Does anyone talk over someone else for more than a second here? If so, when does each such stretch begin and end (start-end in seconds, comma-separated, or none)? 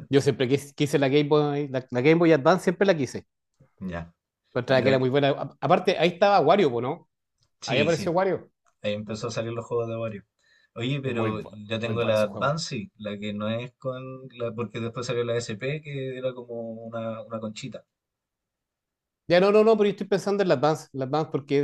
11.0-12.6